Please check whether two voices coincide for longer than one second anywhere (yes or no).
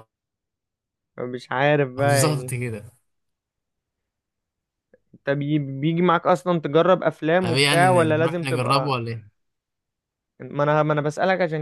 yes